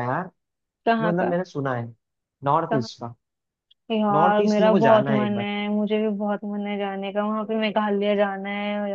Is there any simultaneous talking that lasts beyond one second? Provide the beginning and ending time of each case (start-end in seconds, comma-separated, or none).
4.2-5.5